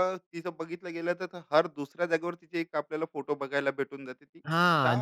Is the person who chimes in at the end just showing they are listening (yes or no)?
no